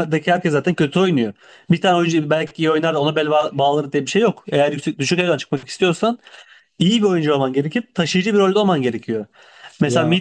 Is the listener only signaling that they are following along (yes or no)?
yes